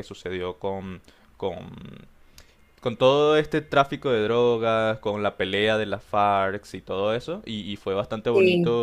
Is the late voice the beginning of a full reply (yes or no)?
no